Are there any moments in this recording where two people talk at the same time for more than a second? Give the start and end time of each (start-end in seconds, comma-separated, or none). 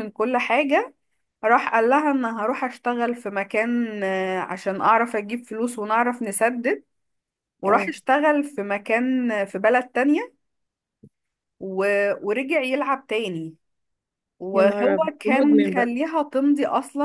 14.5-15.9